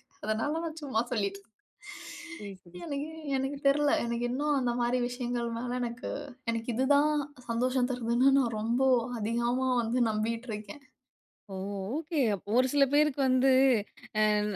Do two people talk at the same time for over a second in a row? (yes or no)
no